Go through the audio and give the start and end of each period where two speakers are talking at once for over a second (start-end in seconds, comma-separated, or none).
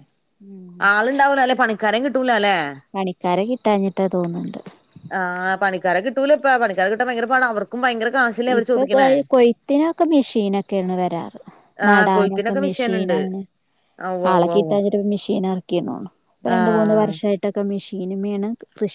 11.9-13.2